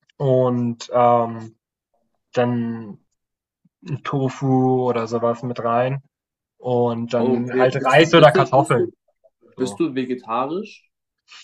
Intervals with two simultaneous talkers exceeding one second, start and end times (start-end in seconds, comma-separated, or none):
7.2-8.9